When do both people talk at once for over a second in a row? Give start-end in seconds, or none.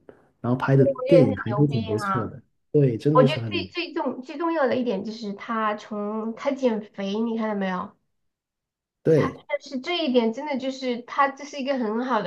0.8-2.4